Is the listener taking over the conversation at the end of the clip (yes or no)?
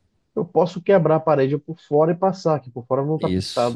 yes